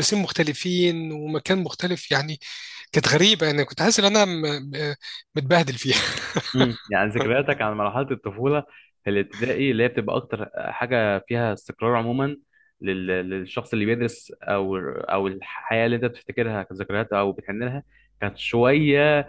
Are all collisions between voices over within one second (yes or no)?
yes